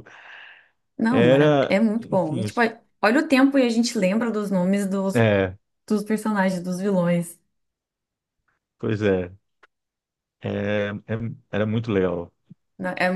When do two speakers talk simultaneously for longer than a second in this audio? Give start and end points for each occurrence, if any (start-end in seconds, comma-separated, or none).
1.1-2.6